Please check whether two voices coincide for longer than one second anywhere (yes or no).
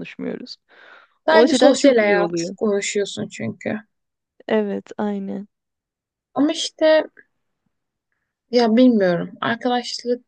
yes